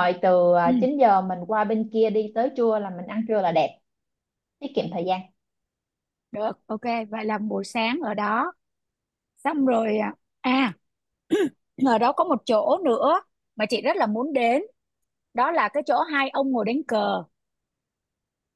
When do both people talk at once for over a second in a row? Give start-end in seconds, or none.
none